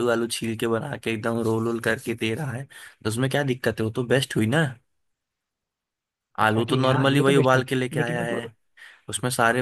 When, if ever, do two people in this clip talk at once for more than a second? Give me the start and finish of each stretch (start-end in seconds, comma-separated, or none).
6.5-8.4